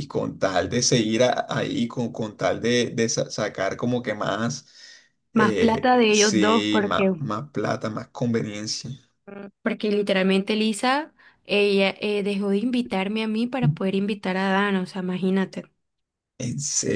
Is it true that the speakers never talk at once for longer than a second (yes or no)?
no